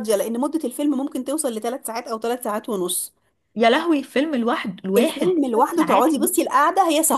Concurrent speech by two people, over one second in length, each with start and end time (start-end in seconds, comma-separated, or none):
5.0-6.5